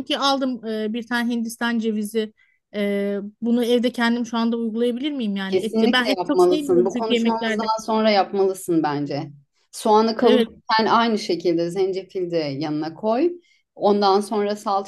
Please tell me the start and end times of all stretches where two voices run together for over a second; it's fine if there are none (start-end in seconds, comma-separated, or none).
5.5-7.7